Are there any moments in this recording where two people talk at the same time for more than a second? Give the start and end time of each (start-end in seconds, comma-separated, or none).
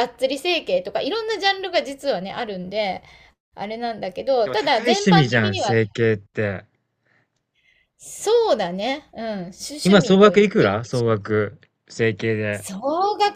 4.4-5.8, 9.8-11.2